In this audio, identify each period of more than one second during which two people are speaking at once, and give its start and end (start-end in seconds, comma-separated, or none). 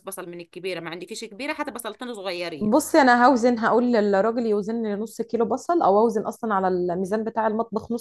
none